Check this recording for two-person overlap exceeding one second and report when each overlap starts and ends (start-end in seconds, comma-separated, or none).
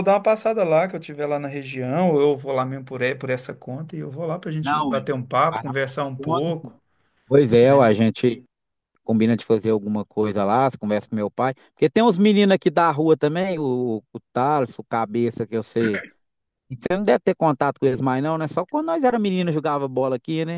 4.6-6.7